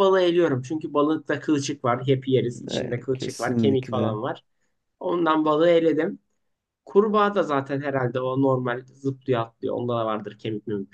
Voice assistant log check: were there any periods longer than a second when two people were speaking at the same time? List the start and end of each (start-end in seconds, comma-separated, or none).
2.7-4.2